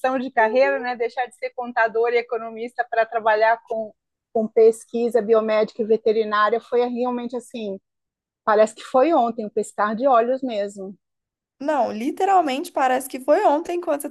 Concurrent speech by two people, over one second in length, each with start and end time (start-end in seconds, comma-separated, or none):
none